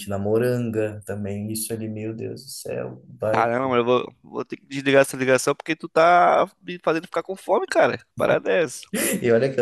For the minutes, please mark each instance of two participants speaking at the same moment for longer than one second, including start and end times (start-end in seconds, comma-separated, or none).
none